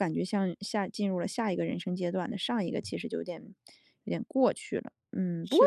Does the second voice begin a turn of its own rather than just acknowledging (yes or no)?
no